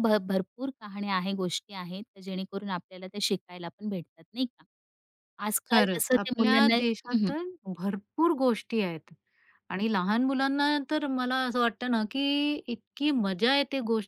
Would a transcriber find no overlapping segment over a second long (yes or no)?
no